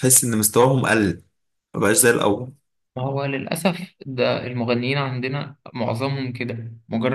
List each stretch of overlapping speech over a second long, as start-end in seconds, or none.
none